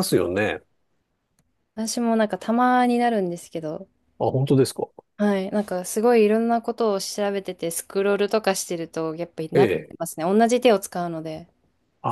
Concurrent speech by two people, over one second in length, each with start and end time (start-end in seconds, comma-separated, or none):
none